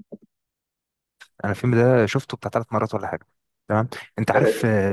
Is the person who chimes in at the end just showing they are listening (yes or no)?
yes